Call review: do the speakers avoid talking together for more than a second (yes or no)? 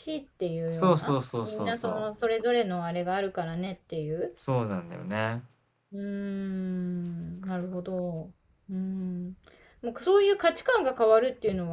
no